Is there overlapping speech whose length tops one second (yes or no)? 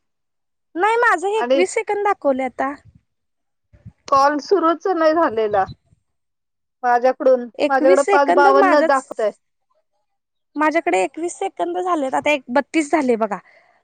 yes